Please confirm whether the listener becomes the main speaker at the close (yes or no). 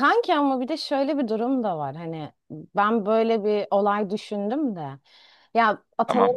no